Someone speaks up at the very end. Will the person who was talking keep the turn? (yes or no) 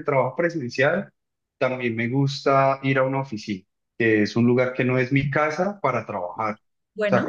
yes